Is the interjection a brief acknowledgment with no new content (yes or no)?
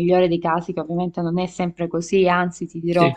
yes